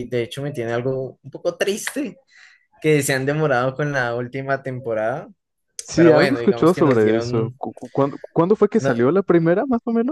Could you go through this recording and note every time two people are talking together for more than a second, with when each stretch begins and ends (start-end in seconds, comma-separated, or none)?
5.9-7.6